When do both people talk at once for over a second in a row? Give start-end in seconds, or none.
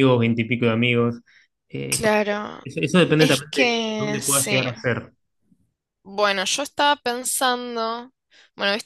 3.2-4.7